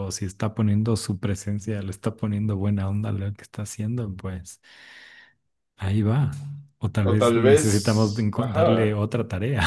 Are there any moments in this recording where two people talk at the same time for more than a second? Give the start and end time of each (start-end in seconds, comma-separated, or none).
7.0-9.0